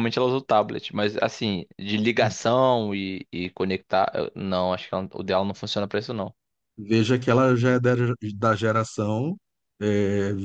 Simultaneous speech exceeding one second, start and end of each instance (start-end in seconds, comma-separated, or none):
none